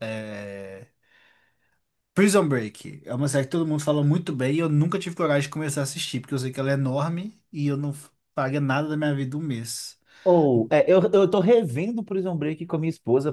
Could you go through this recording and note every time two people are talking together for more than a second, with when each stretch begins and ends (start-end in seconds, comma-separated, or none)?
none